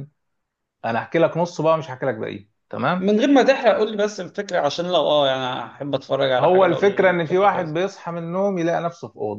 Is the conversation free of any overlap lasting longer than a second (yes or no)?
no